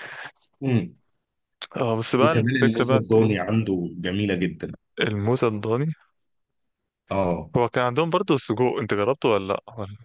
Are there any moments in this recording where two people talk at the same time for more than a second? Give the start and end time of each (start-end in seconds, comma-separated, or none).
2.2-3.5